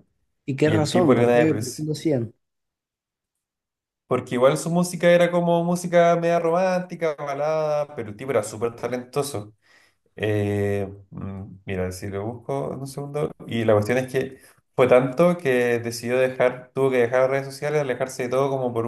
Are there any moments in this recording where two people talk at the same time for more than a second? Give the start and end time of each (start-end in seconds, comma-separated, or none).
0.6-1.9